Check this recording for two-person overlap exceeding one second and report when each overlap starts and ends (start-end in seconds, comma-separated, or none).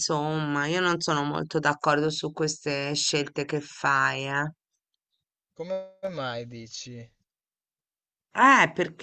none